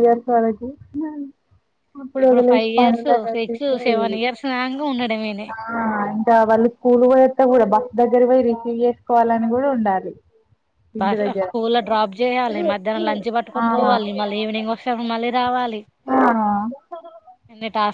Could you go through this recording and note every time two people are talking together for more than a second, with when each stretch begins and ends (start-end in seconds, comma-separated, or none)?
2.3-4.2